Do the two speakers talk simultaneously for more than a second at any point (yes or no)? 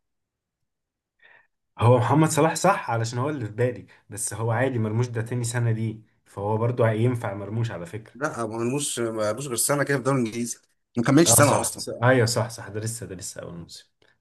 no